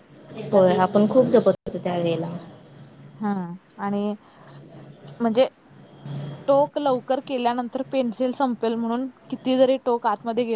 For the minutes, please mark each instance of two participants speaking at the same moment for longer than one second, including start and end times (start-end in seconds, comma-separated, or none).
none